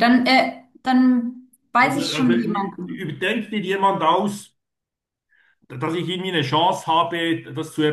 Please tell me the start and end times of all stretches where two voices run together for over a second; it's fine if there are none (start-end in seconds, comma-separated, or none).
1.8-3.2